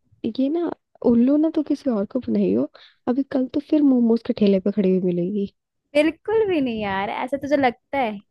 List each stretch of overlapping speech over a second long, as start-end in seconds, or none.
none